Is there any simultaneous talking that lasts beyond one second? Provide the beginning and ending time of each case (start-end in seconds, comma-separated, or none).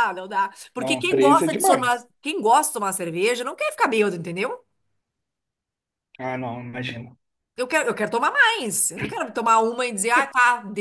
0.8-2.1